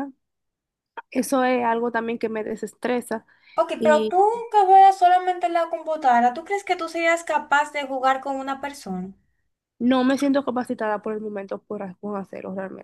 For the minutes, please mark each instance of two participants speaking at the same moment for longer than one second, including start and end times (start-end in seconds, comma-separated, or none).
none